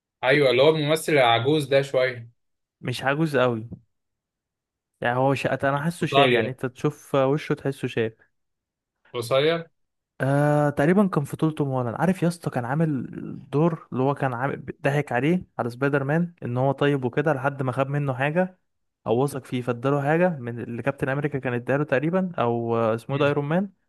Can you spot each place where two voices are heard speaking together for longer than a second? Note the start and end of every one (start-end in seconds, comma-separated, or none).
none